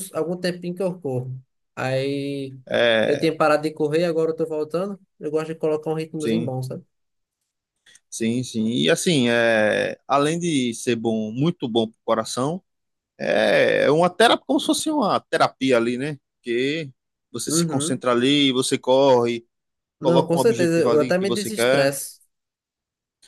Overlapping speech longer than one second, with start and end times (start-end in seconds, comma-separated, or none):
20.0-21.9